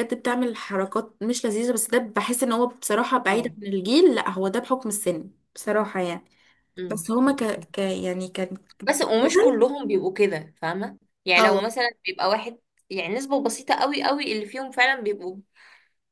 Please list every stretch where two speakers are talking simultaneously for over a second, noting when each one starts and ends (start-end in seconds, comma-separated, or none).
none